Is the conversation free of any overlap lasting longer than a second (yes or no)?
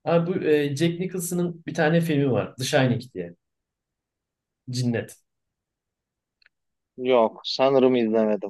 yes